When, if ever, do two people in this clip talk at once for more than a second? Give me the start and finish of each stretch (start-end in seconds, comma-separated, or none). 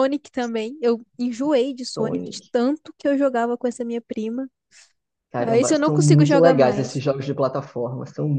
5.4-7.0